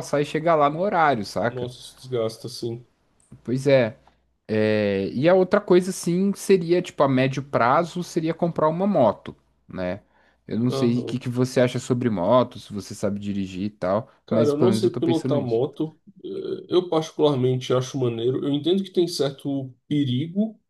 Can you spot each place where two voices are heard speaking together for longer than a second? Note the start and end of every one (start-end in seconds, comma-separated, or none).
14.3-15.6